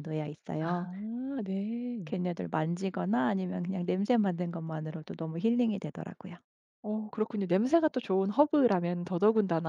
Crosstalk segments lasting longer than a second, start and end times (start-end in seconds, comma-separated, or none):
none